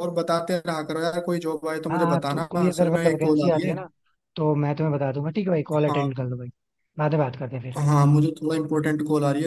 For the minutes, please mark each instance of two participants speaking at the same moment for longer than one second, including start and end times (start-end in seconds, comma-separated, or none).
1.9-3.7